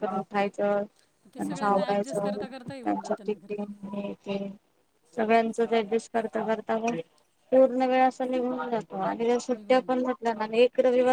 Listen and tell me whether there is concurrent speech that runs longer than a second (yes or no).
yes